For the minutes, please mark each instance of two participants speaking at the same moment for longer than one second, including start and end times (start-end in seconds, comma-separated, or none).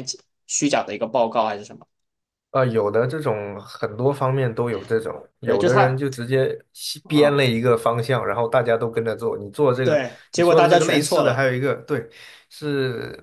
9.8-11.4